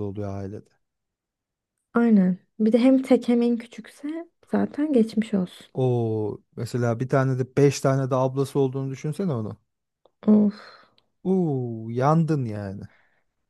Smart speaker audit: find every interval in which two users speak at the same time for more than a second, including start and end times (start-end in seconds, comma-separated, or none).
none